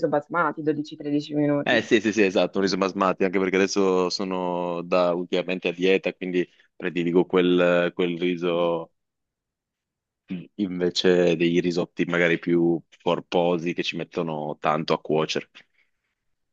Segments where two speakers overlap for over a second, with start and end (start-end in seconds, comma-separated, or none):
none